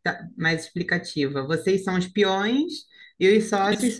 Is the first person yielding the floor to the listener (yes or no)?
no